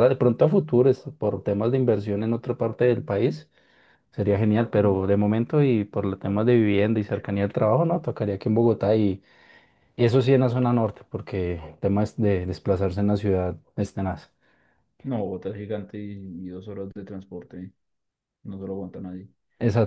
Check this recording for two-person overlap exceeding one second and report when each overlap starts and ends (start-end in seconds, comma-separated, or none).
none